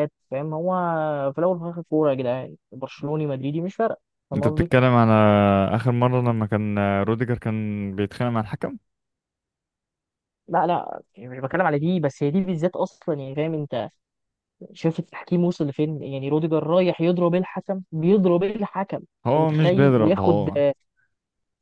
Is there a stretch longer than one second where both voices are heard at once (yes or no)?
yes